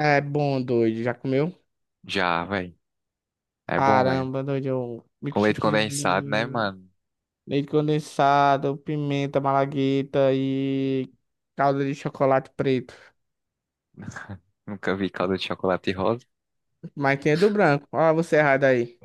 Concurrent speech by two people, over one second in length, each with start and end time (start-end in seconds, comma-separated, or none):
5.3-6.7